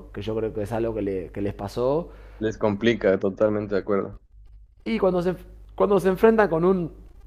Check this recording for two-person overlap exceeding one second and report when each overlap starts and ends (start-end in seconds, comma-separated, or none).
none